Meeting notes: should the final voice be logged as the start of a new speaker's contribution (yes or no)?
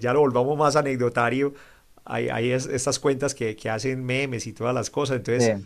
no